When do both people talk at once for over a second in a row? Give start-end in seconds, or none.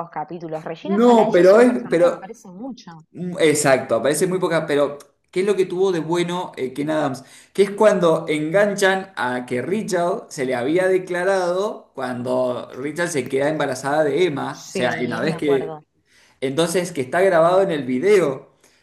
0.8-2.3, 14.5-15.8